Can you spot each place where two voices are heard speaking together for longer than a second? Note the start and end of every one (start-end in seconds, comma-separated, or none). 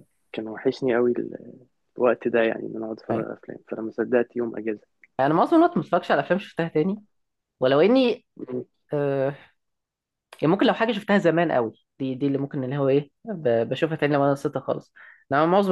none